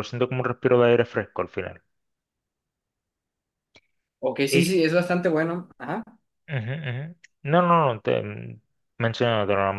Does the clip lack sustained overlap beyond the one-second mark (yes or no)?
yes